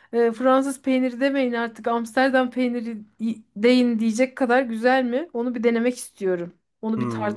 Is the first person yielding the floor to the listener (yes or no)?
yes